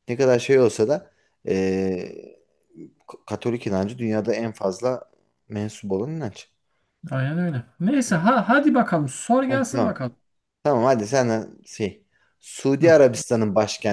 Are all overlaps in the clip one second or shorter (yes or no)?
yes